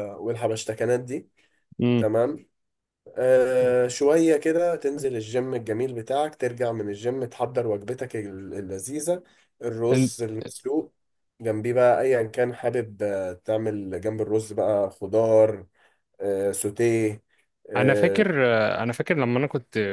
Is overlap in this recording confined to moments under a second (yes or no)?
yes